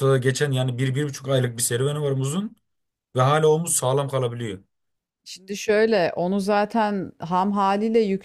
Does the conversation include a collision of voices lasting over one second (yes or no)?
no